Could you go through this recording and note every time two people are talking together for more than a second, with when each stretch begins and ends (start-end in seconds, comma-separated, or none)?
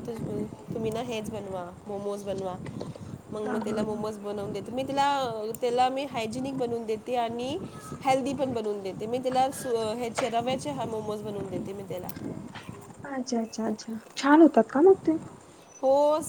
none